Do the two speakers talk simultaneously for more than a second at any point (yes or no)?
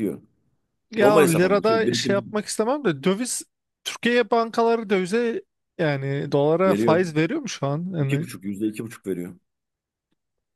yes